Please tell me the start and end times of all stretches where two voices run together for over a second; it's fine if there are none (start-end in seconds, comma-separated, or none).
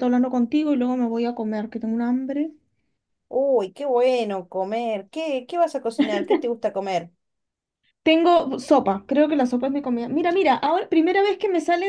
none